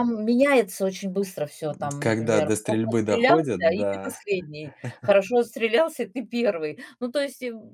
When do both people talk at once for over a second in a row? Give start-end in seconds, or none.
2.0-4.2